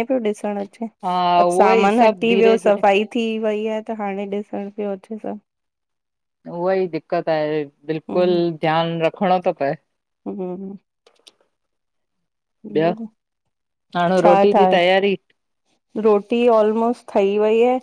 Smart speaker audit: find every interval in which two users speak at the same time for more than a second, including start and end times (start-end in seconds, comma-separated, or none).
1.4-2.8